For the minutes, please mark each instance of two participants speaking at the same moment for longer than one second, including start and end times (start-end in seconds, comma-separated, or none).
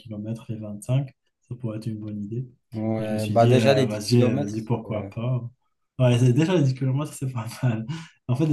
3.0-4.5